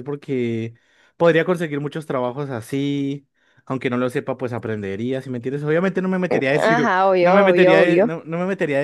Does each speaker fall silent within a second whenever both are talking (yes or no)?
no